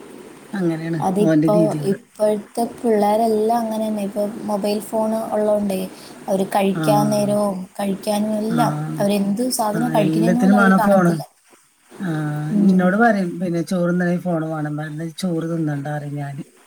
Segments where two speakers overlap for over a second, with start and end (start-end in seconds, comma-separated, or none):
9.8-11.1